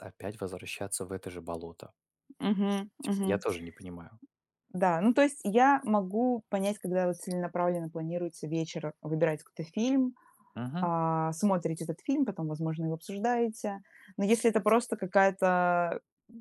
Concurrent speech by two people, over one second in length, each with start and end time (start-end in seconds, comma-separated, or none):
none